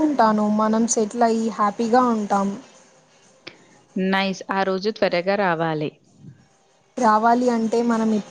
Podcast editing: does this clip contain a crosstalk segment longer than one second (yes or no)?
no